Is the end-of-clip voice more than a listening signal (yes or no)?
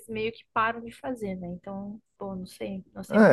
yes